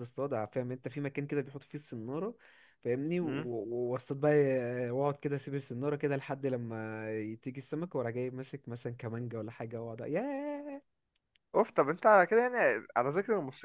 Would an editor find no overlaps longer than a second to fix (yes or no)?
yes